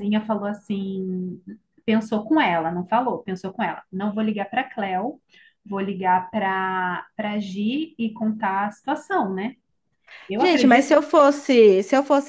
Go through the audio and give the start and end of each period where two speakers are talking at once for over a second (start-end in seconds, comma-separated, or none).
none